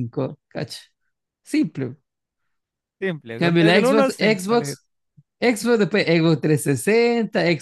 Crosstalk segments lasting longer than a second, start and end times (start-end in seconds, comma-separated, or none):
3.3-4.8